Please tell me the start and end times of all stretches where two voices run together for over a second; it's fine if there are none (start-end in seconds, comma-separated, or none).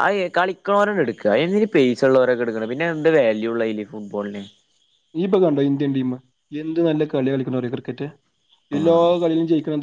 none